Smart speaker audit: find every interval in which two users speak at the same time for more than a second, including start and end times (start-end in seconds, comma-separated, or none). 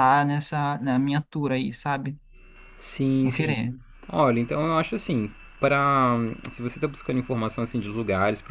none